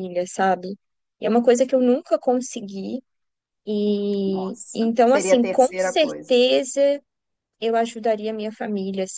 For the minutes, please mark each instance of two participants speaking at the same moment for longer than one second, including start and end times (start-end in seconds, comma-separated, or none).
4.2-6.4